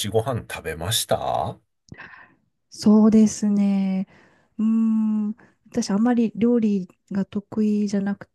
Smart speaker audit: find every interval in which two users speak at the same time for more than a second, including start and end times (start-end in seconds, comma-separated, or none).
none